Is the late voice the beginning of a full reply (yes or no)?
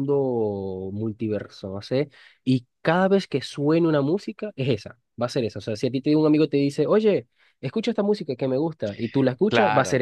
yes